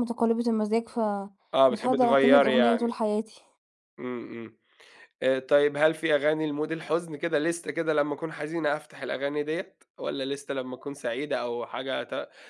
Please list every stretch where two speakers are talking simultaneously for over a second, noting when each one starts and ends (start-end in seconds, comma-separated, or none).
1.5-2.9